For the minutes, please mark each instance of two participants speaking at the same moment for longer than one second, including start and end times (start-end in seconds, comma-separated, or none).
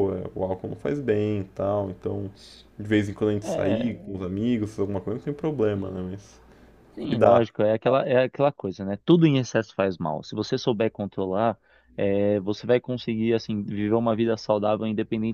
none